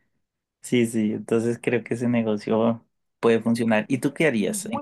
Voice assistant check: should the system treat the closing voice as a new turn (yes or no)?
yes